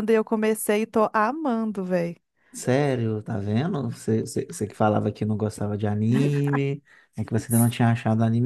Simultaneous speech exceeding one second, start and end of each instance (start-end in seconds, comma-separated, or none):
none